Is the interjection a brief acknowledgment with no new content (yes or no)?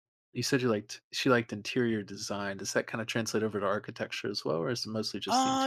no